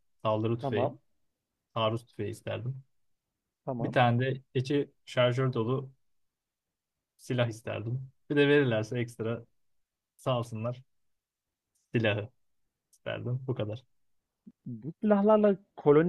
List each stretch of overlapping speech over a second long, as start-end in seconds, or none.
none